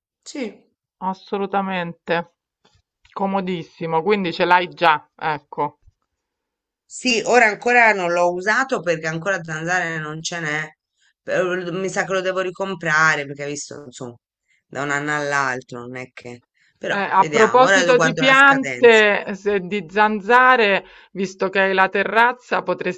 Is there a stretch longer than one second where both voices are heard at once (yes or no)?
yes